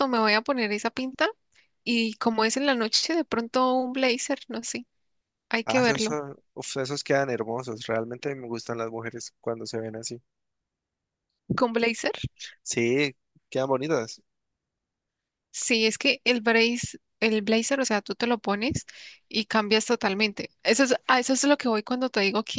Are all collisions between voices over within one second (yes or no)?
yes